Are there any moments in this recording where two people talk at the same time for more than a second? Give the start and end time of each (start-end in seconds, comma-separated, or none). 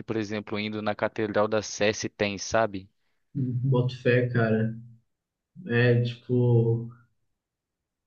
none